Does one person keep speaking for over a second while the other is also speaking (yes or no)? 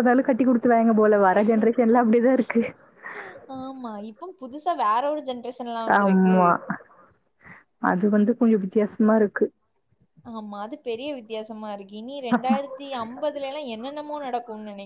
no